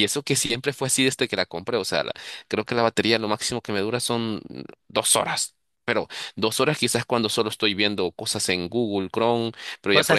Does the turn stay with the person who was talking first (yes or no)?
yes